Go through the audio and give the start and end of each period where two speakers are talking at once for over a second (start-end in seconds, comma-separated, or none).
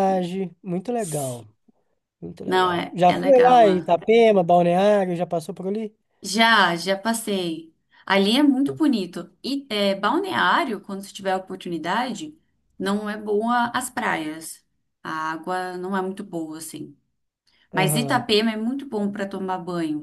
2.4-3.9